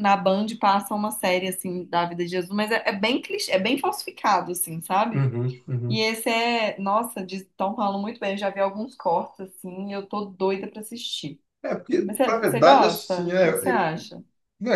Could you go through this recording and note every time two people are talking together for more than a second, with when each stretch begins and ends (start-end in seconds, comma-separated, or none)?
12.1-13.5